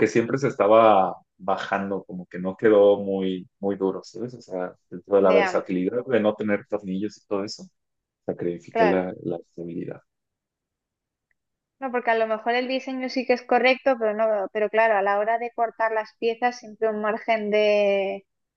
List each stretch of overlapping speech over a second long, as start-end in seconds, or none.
none